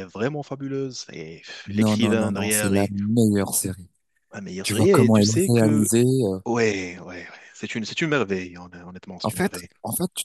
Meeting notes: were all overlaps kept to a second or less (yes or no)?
no